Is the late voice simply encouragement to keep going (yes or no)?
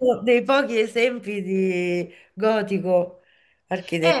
no